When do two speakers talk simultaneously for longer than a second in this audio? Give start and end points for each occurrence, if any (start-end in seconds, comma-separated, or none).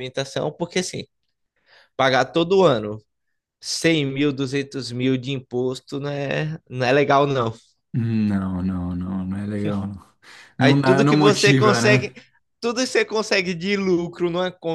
10.6-12.1